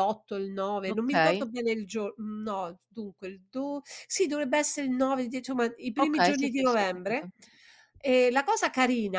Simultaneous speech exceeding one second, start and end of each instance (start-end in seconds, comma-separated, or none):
6.0-7.3